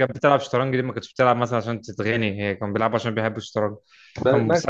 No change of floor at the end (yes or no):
yes